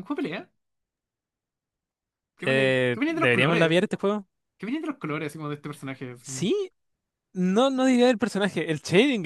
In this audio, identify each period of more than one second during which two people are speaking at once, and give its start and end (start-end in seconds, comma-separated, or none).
2.4-3.8